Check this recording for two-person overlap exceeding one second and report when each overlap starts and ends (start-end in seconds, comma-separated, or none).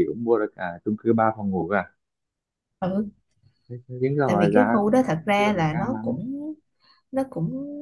4.3-6.2